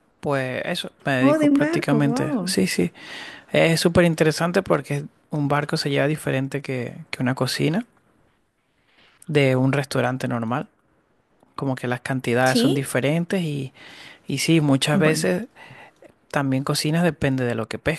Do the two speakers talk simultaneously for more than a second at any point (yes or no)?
yes